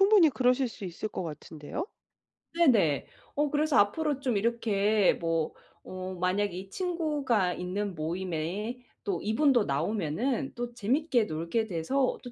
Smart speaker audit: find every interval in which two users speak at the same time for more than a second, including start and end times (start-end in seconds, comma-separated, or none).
none